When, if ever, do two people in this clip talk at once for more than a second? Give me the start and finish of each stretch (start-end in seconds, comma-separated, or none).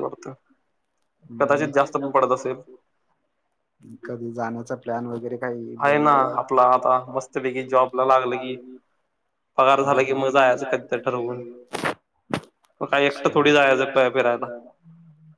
9.8-11.4